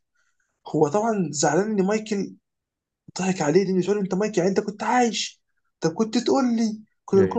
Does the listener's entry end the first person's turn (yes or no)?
no